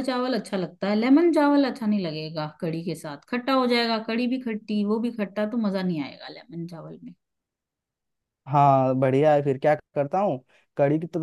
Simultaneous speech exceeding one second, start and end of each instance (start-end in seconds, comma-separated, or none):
none